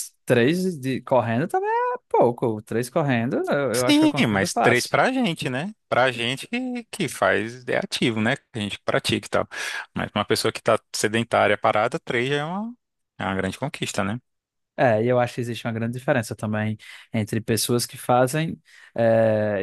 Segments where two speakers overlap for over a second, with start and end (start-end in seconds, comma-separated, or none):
3.7-5.0